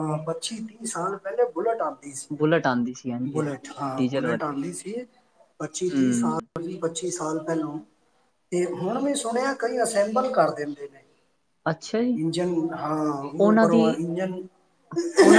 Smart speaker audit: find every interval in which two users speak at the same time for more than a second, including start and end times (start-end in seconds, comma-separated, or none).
2.4-4.5